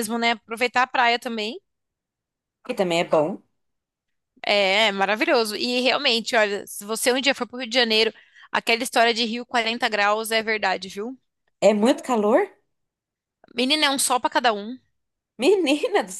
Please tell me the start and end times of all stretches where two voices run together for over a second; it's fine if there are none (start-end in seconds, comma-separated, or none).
none